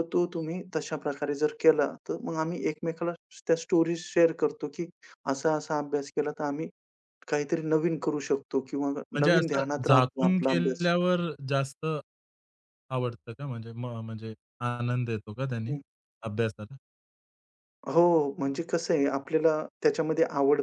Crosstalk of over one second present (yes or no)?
yes